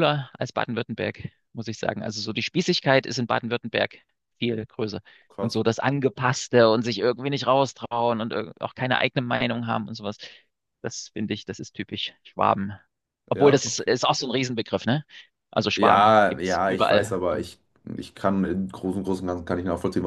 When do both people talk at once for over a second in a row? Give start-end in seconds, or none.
15.8-17.5